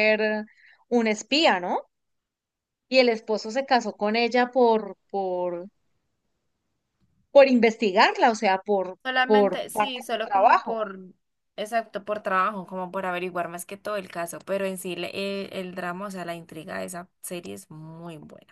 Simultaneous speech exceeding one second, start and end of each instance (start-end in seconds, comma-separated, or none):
9.0-10.8